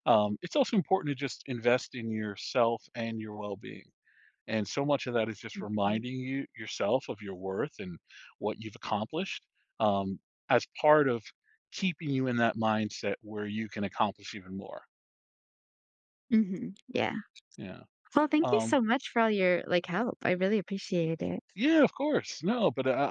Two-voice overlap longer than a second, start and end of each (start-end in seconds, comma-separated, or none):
none